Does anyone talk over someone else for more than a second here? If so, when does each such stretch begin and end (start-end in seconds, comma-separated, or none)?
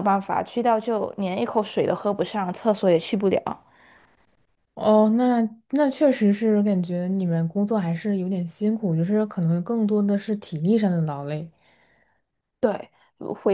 none